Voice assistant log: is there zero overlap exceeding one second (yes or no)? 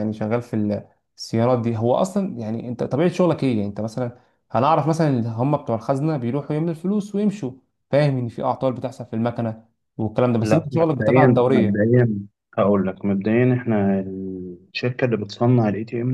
no